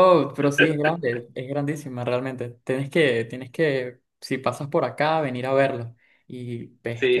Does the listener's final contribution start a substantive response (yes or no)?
yes